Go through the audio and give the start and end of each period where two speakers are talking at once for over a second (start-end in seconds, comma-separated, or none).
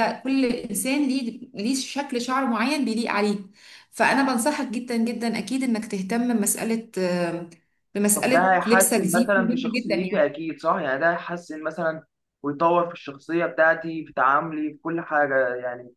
8.1-10.2